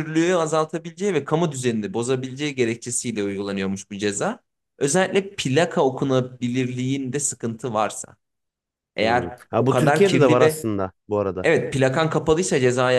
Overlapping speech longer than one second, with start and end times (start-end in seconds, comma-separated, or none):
9.0-10.7